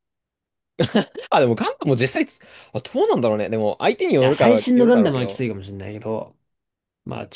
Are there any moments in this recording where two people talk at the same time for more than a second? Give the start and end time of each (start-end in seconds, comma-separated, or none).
4.2-5.4